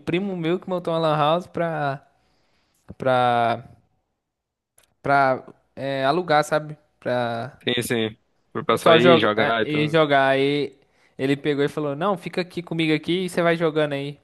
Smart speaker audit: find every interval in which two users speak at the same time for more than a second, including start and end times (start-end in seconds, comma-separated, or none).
8.6-10.0